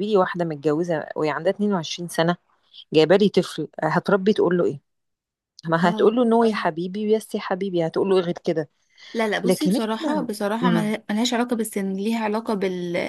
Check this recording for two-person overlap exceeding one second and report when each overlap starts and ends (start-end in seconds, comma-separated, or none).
9.4-10.9